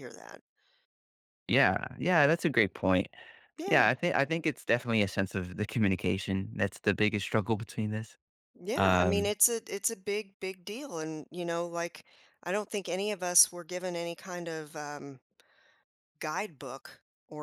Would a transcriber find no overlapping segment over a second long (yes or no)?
yes